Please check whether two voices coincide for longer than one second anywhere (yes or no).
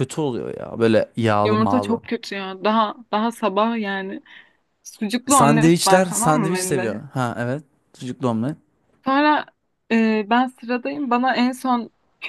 yes